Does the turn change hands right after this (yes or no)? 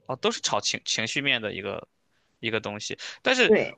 no